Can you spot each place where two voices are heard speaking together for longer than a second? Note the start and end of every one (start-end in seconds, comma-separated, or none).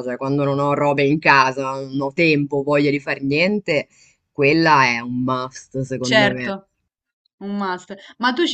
none